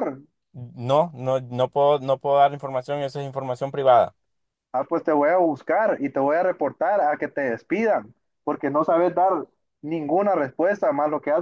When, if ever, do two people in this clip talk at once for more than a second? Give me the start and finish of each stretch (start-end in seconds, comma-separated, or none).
none